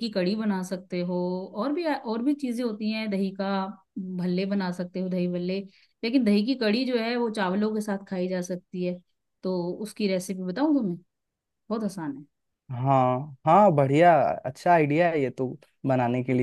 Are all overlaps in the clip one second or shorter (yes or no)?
yes